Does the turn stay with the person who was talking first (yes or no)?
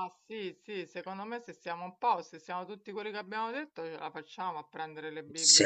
yes